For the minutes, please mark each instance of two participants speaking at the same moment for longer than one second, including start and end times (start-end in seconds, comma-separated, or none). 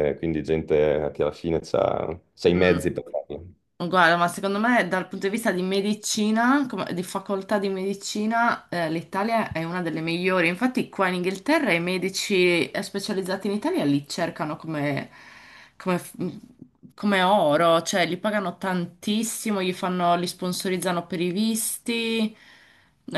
none